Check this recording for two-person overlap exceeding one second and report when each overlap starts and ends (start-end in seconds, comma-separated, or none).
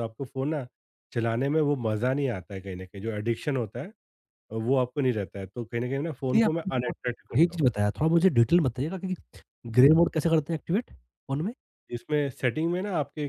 6.3-7.6